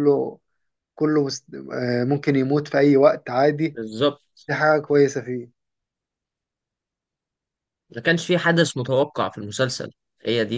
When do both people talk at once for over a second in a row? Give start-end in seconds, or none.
none